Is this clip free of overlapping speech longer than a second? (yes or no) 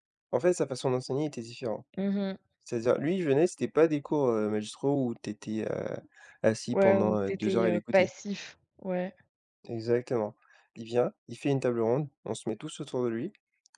no